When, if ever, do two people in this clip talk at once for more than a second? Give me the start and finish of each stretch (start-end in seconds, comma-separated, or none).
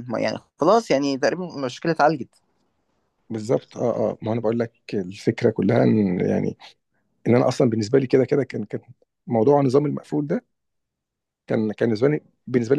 none